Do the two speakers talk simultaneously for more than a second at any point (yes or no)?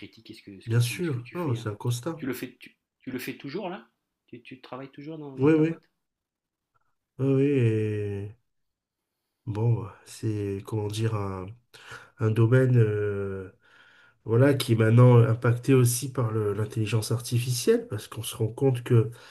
yes